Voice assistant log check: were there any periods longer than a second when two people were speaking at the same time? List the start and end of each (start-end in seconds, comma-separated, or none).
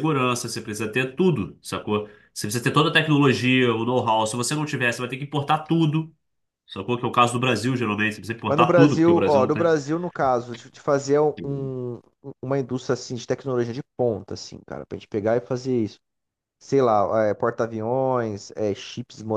8.5-9.7